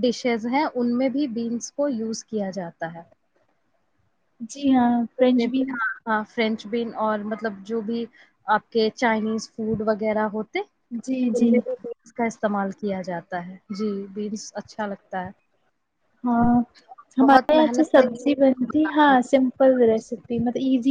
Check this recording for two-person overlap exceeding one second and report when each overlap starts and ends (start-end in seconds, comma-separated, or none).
17.2-19.4